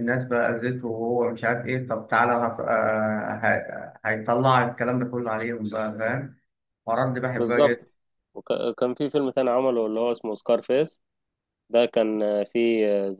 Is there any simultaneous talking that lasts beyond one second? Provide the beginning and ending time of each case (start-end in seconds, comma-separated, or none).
none